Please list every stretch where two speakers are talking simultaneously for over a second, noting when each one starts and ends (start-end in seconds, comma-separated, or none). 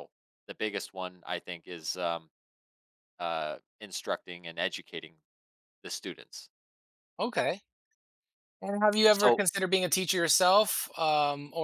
none